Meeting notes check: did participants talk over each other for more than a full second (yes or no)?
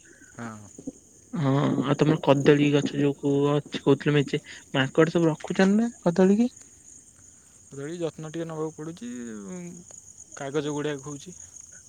no